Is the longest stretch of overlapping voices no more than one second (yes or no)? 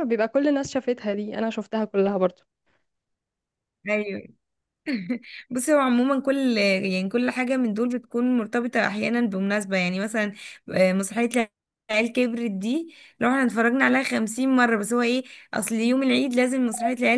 yes